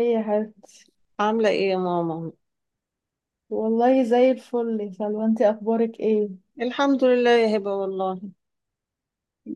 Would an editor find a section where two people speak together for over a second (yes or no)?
no